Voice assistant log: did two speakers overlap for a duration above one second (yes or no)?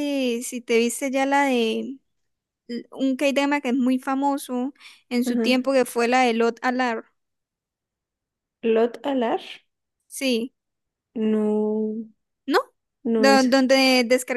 no